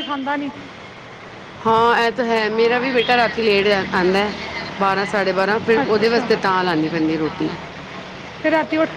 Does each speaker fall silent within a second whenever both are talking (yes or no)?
yes